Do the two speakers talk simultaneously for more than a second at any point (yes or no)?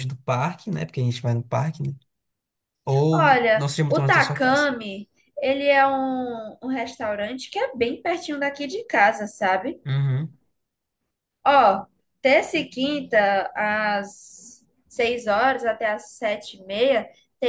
yes